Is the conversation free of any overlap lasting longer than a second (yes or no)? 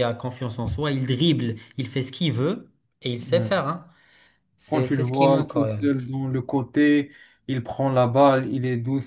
no